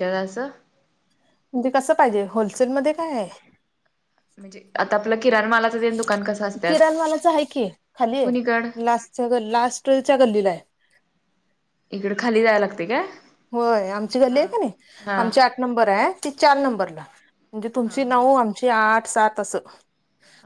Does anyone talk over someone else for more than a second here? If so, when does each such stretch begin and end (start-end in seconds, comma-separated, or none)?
none